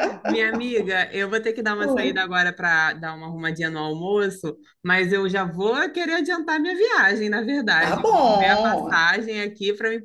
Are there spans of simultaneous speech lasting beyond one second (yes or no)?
yes